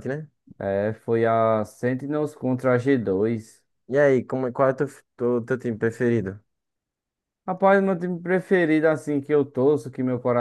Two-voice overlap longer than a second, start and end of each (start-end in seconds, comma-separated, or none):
none